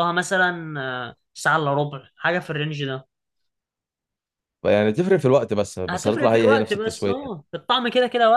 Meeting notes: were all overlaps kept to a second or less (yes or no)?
no